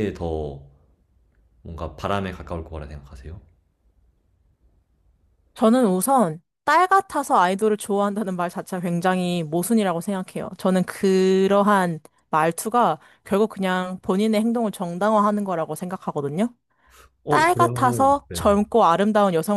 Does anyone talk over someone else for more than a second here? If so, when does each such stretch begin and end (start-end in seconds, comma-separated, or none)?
17.3-18.6